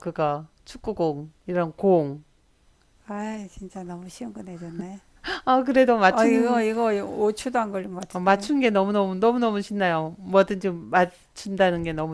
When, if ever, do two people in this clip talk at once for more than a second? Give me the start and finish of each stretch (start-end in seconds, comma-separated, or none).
none